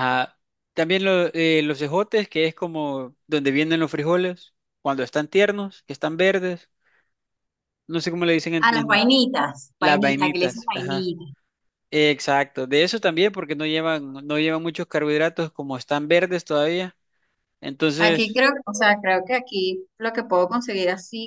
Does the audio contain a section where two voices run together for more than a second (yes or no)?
yes